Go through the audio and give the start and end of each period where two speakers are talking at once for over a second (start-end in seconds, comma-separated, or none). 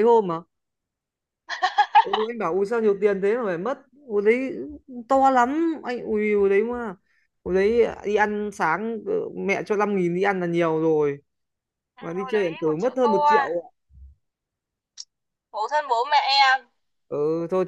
12.0-13.6